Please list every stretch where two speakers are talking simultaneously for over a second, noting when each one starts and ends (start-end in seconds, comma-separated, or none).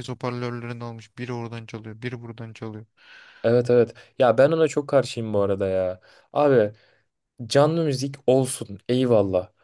none